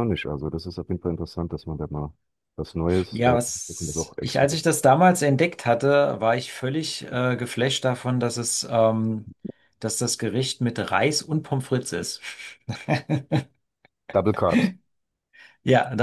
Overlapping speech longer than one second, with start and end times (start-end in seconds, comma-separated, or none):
3.1-4.6